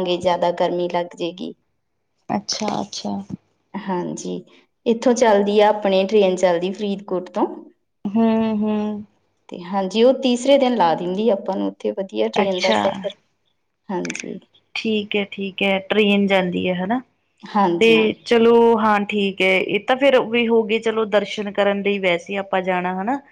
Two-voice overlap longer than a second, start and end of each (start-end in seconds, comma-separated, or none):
none